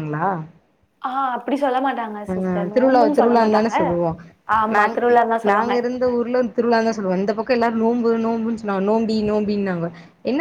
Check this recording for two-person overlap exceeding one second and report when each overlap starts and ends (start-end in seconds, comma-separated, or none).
2.3-3.7